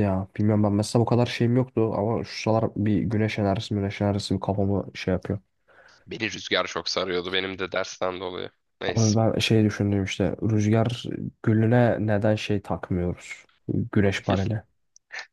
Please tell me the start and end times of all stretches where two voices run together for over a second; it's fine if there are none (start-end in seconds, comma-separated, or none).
none